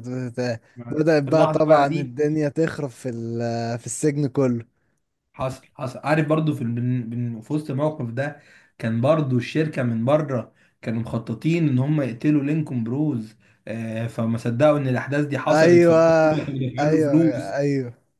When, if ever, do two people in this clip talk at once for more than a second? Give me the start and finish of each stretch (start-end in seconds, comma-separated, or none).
0.8-2.1